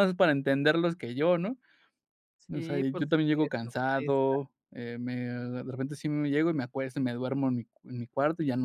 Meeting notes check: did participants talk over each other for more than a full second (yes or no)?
yes